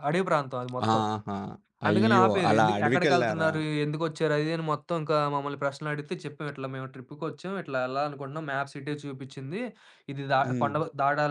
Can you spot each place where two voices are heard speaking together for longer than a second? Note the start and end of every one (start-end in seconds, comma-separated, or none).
1.9-3.5